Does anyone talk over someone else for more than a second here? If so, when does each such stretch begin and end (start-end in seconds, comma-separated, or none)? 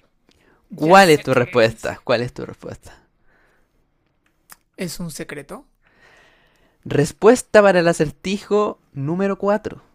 0.7-2.0